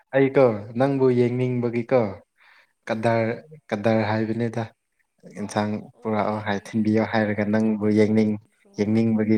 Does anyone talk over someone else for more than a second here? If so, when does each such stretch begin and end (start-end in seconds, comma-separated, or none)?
6.0-8.3